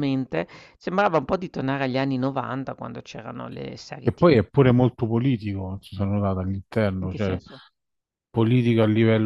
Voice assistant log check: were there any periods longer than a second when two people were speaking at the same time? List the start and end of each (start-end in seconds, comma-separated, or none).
none